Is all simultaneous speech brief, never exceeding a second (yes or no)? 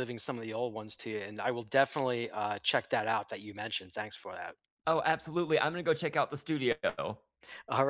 yes